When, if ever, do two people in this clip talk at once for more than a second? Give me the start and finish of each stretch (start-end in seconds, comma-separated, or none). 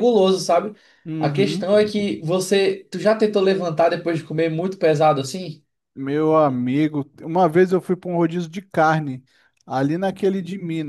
none